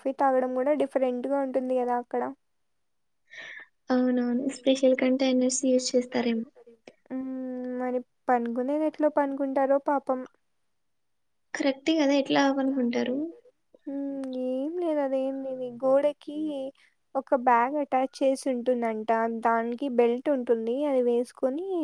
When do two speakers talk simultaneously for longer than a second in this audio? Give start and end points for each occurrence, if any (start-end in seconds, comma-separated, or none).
none